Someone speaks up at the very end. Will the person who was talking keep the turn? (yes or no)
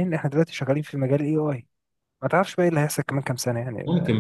no